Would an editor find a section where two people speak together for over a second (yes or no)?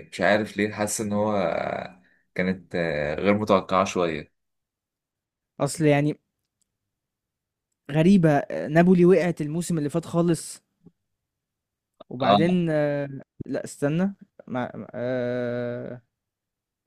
no